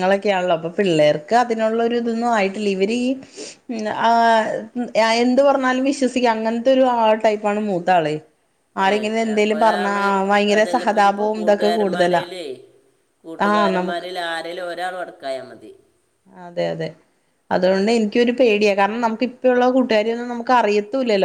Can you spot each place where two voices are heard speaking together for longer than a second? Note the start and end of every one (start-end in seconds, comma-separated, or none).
10.6-12.2